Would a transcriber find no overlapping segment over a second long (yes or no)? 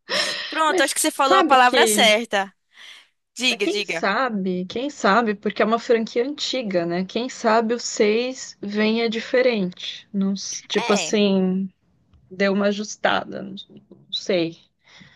no